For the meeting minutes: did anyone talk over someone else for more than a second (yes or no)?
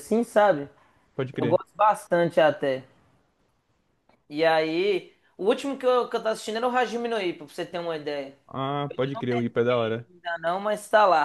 yes